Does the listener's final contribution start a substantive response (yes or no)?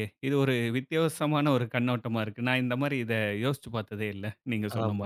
yes